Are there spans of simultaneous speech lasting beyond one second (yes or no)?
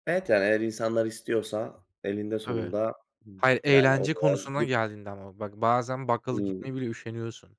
yes